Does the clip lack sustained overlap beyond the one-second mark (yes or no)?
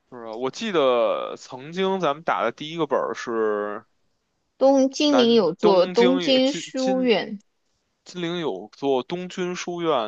no